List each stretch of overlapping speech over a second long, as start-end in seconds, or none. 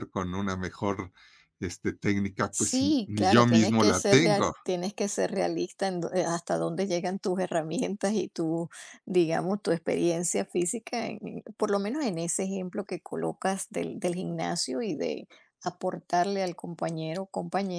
2.5-4.5